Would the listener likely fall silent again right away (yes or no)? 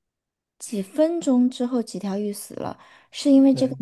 yes